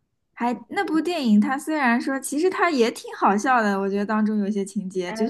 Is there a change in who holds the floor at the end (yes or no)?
no